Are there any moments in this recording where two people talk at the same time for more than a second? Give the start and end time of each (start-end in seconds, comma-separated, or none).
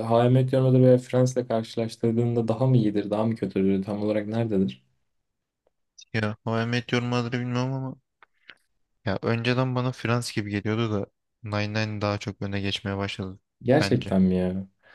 none